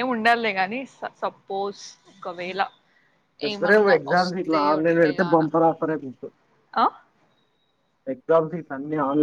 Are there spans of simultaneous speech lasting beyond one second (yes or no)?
yes